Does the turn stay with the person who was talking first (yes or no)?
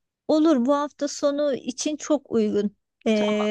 yes